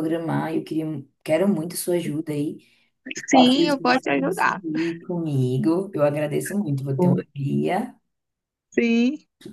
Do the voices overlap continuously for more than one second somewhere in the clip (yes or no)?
yes